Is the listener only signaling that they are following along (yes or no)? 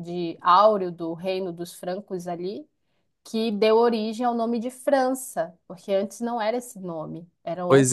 no